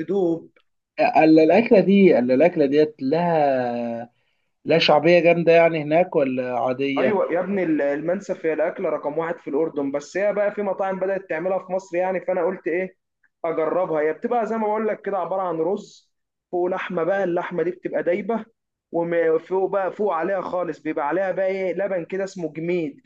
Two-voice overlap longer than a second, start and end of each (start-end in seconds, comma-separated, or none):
none